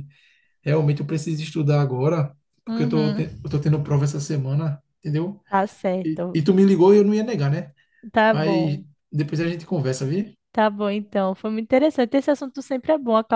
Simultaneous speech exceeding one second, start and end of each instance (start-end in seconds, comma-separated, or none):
none